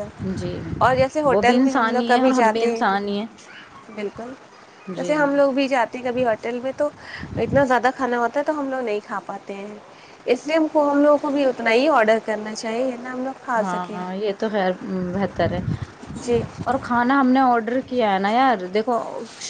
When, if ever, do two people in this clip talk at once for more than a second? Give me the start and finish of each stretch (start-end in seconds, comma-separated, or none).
1.3-2.8